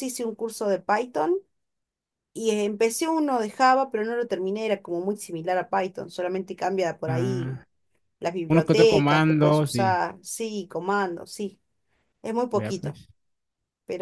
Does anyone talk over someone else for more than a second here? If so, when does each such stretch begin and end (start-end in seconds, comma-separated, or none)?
8.5-10.0